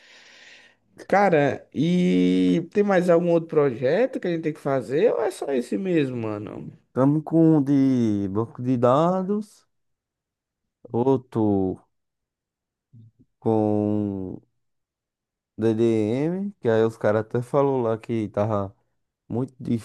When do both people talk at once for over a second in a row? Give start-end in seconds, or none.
none